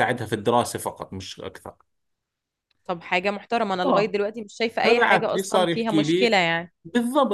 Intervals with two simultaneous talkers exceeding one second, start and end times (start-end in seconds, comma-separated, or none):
4.8-6.3